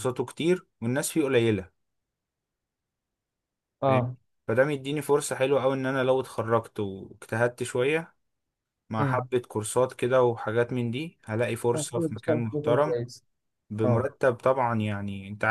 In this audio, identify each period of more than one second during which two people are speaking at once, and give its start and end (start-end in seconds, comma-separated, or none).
11.7-13.0